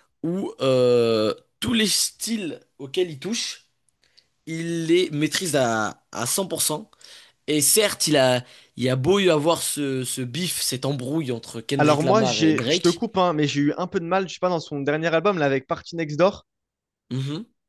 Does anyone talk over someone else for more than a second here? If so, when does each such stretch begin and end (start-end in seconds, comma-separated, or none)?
11.8-13.0